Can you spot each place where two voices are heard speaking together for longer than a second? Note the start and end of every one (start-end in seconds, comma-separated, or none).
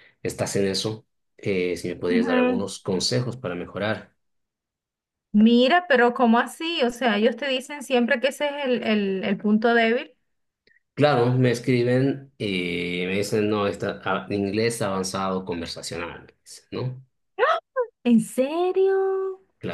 none